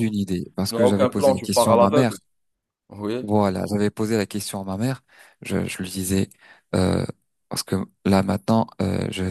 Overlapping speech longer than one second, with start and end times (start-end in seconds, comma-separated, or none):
0.6-2.2